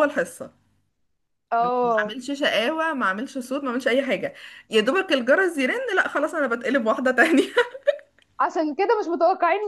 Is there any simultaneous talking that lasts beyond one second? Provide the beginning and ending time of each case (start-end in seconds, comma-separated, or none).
none